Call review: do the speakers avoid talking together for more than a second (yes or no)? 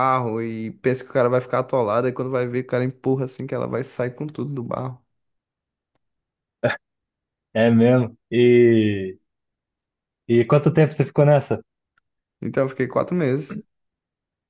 yes